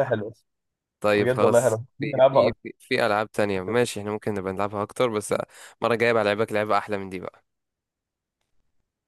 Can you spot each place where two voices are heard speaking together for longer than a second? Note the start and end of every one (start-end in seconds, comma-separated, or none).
1.1-2.5